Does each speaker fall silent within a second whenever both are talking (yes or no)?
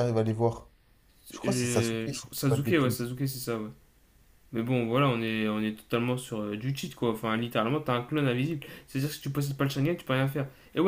no